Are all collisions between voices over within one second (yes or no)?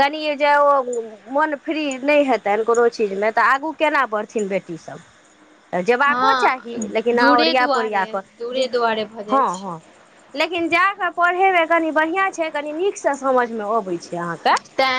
no